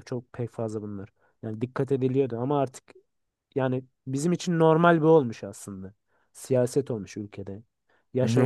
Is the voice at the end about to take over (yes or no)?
yes